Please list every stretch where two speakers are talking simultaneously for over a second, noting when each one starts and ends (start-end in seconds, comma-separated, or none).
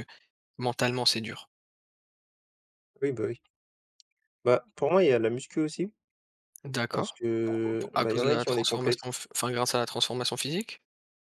6.9-9.0